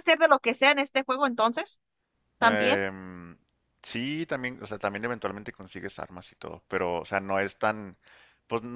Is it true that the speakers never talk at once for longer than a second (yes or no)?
yes